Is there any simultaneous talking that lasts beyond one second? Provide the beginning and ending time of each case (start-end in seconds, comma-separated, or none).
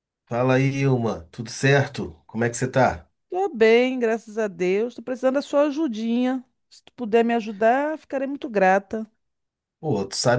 none